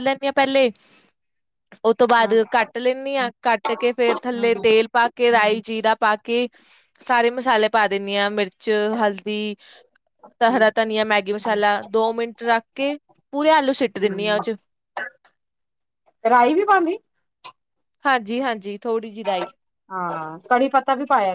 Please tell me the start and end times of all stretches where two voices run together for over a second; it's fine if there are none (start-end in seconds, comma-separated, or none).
none